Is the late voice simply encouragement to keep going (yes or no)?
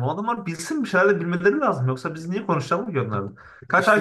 yes